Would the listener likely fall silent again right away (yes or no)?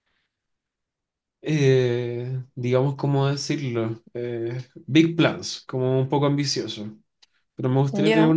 yes